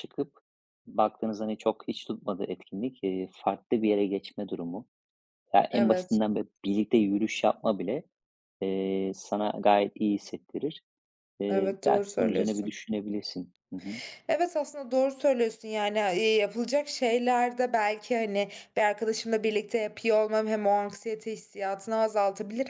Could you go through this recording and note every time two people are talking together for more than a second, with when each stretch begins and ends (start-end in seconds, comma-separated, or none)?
11.5-12.8